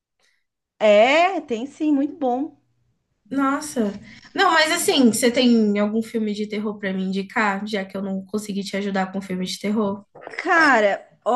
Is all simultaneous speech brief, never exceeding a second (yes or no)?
yes